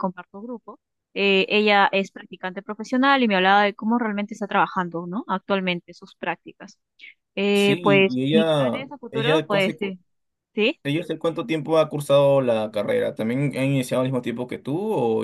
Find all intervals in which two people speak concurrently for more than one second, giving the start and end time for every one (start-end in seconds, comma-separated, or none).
7.5-10.0